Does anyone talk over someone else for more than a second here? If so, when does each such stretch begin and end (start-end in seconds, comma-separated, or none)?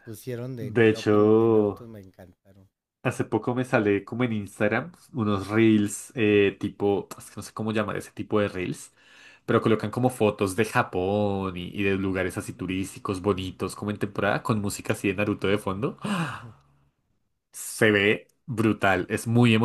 0.6-1.8